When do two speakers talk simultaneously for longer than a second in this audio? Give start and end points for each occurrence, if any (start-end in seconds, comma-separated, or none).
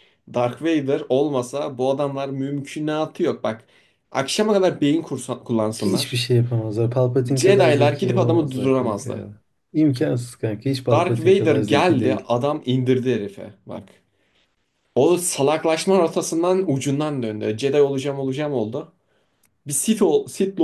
7.4-9.3, 10.9-12.3